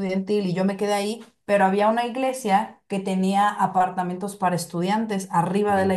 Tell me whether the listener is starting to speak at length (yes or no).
no